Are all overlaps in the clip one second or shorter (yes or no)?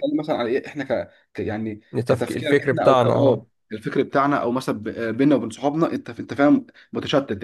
no